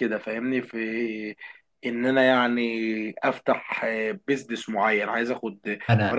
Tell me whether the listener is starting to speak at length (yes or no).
no